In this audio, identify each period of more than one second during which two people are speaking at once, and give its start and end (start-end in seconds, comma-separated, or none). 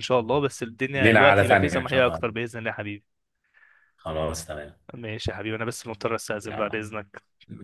0.9-2.2